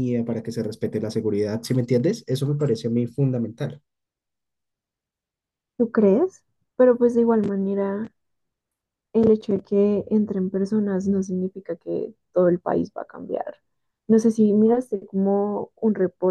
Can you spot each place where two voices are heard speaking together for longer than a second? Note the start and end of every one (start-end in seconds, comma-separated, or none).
none